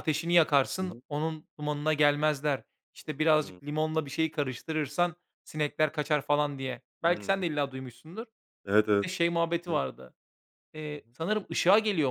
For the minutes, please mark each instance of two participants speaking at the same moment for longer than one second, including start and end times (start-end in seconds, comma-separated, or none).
none